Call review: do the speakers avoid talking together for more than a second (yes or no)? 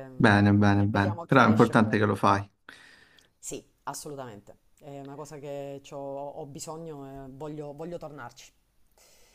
no